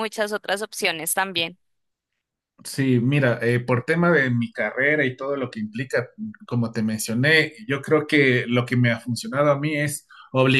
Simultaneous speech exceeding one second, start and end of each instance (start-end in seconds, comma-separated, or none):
none